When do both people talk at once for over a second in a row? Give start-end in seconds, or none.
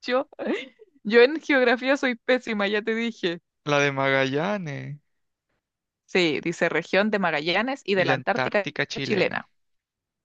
7.9-9.5